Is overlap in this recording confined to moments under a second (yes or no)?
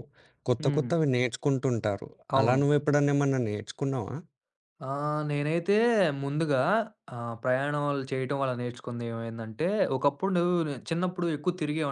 yes